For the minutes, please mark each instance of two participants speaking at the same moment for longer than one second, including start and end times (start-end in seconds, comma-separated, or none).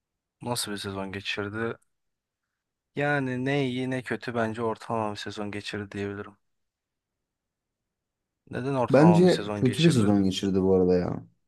8.9-10.1